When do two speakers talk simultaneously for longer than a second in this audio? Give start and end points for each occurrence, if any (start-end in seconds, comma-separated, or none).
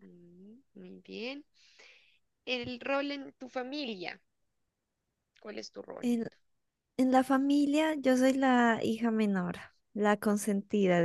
none